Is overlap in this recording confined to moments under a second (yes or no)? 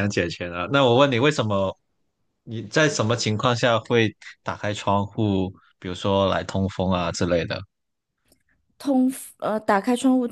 yes